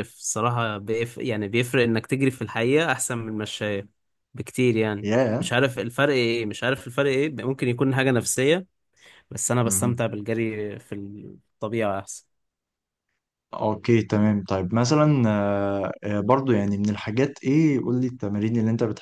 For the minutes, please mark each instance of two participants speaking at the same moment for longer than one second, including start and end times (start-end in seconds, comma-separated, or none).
none